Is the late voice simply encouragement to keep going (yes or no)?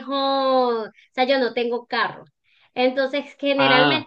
yes